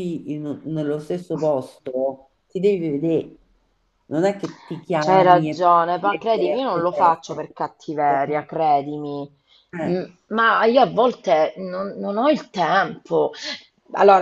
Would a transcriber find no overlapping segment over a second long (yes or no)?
no